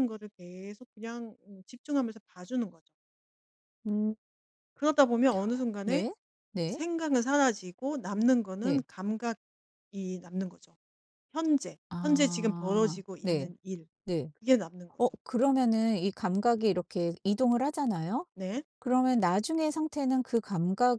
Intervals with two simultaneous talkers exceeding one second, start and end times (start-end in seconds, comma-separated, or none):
11.9-13.5